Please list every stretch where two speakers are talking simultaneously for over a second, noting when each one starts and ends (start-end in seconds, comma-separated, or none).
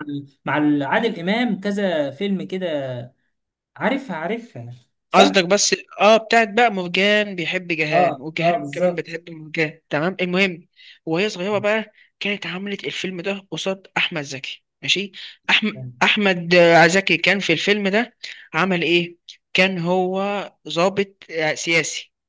7.9-9.2